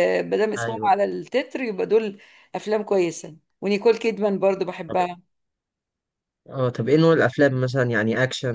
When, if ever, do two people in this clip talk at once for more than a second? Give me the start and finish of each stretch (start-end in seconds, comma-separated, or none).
none